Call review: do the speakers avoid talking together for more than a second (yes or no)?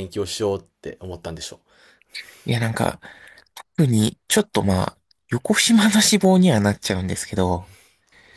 yes